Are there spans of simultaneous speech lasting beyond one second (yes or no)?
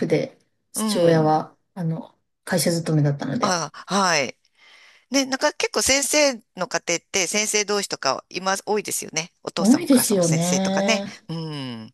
yes